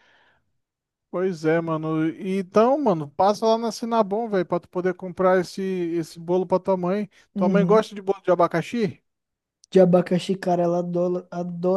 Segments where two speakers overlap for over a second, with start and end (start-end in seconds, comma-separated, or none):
none